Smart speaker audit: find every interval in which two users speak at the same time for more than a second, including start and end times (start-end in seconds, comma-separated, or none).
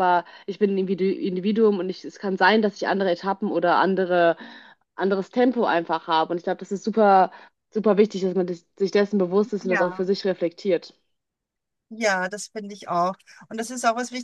none